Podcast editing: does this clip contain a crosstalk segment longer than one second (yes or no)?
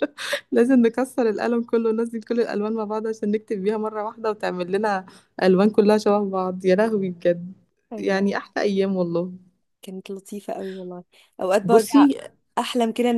no